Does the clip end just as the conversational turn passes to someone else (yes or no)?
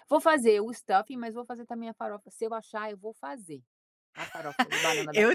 yes